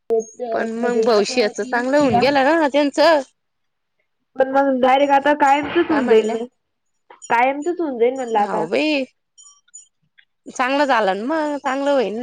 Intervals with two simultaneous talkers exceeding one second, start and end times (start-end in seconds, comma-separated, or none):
0.8-2.2